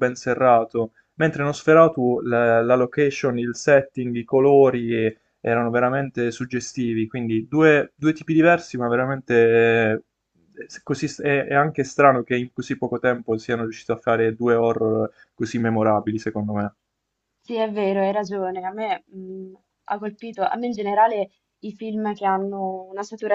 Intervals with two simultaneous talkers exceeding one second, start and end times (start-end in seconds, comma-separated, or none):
none